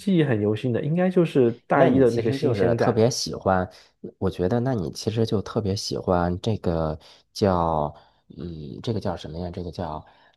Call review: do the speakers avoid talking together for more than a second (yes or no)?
no